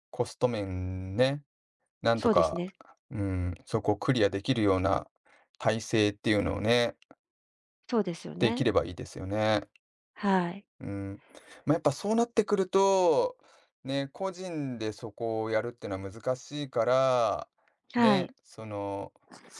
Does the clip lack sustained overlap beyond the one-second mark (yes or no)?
yes